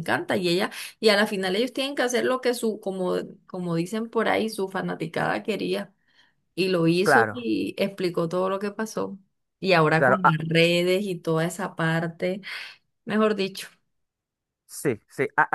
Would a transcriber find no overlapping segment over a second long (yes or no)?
yes